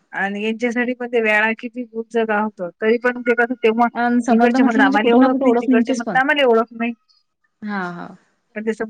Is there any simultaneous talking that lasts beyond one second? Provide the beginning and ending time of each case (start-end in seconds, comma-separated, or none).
4.0-6.2